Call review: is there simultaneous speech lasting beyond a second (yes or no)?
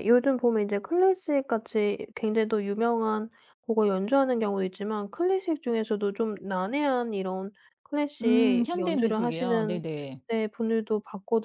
yes